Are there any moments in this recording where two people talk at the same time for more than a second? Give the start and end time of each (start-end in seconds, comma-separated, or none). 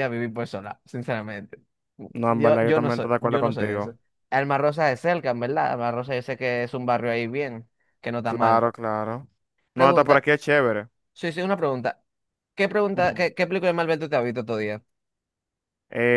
2.3-3.9